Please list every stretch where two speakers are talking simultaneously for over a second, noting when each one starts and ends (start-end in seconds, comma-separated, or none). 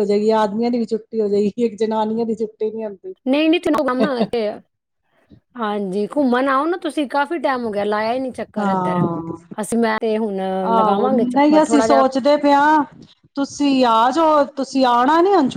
10.8-12.0